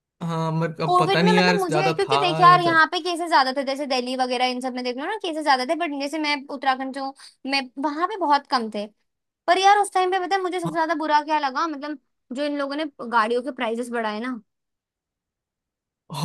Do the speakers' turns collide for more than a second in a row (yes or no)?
yes